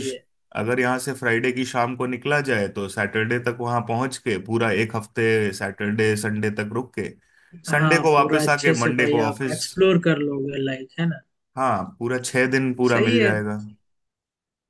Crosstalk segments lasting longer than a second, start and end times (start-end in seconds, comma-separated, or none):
7.7-9.6